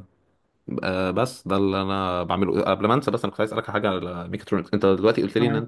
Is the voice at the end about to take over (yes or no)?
no